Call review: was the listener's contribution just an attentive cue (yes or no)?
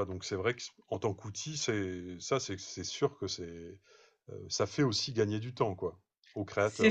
no